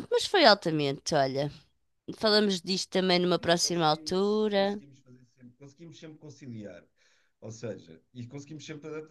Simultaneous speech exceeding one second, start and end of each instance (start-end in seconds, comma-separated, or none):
3.4-4.8